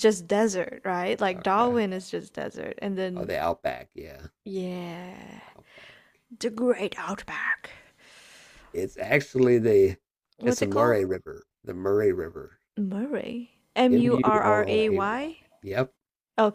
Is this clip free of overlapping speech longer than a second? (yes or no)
no